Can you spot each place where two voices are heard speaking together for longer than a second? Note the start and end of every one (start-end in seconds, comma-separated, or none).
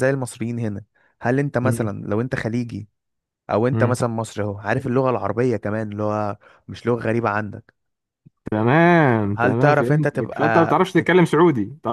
9.4-11.3